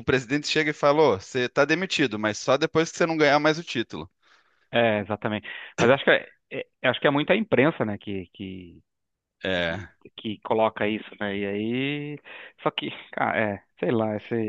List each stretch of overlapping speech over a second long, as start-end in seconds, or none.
none